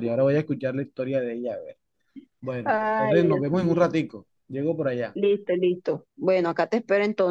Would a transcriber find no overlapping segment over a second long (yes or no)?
no